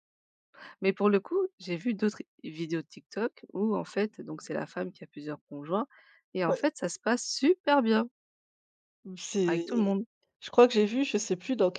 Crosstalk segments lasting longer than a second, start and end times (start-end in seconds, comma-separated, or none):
none